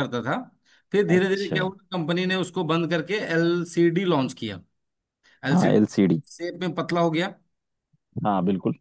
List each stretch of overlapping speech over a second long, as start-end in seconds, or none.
none